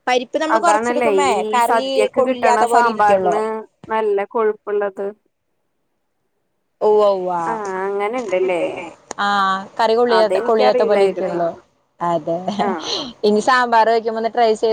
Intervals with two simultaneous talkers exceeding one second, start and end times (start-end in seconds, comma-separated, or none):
0.6-3.4, 10.2-11.4